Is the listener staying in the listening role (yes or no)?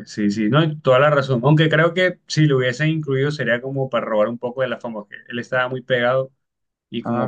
yes